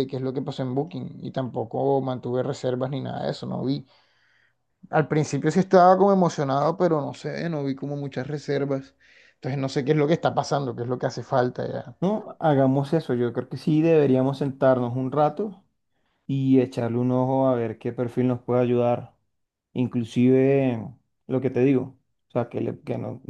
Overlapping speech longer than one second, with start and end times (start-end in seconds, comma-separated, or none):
none